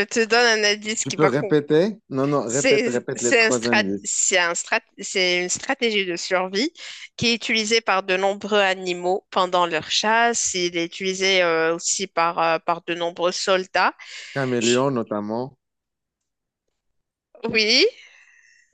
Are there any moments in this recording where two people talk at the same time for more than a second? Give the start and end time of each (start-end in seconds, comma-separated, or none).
2.4-4.1